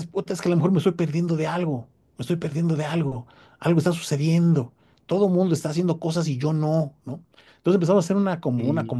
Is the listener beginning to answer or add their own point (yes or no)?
no